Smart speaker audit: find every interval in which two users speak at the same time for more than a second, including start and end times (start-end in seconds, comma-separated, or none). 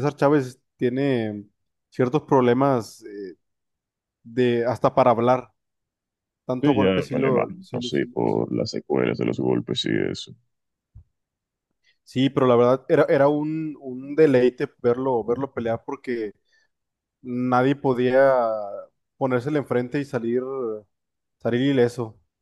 6.6-8.4